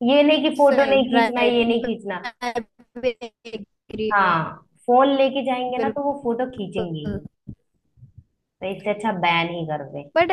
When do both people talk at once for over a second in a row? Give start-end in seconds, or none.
0.6-2.2